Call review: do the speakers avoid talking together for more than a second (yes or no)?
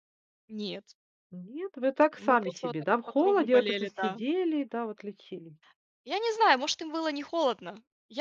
no